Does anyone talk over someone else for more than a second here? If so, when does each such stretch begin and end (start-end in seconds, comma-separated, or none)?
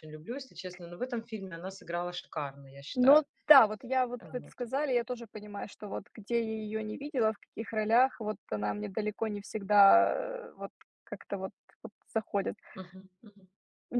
none